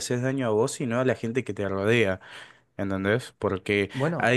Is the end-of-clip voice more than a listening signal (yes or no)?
no